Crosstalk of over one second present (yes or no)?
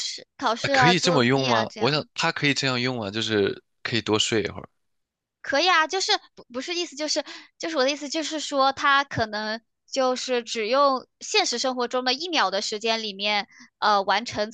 yes